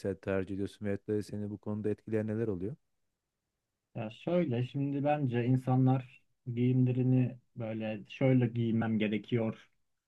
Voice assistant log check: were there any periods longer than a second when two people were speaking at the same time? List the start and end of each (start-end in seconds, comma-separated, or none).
none